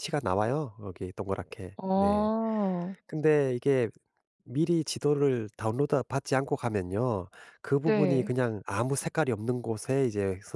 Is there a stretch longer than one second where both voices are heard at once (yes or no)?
no